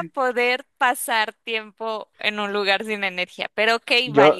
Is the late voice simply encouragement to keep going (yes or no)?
no